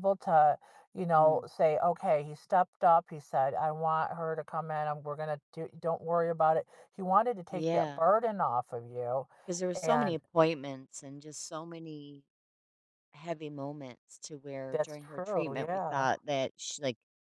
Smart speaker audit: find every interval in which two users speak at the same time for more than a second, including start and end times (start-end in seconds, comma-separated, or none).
14.7-16.1